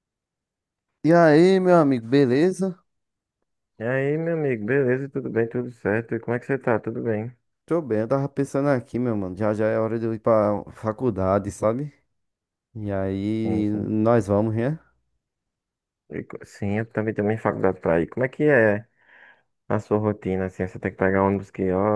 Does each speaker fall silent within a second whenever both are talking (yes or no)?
yes